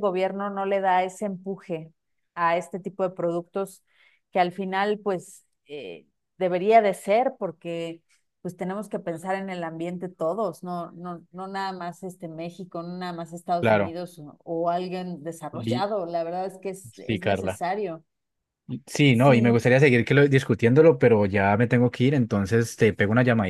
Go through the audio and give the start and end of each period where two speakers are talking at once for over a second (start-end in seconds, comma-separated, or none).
none